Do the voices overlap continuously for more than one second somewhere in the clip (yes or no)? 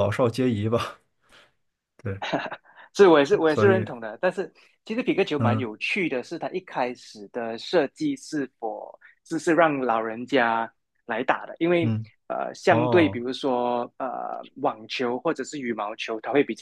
no